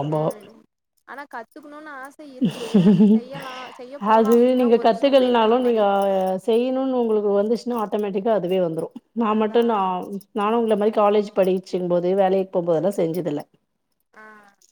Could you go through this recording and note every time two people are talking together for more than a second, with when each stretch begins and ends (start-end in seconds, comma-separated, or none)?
4.2-5.8